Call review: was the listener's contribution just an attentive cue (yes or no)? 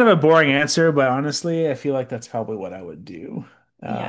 no